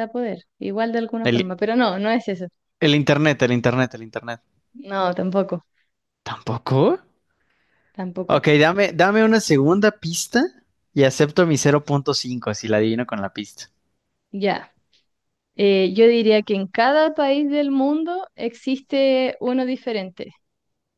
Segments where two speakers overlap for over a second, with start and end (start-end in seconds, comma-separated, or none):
none